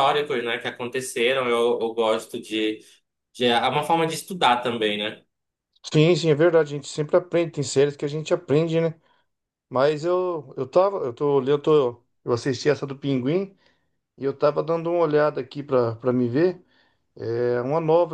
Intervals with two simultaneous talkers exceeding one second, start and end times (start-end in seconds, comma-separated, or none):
none